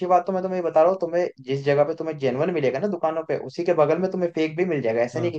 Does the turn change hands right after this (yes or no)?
no